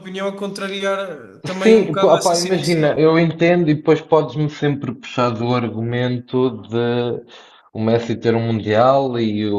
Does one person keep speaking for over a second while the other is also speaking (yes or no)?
yes